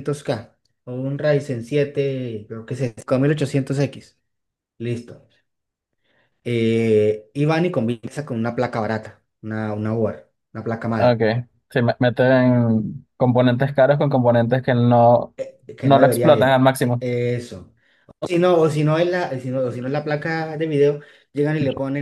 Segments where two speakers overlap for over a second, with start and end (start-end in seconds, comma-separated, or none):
15.8-17.0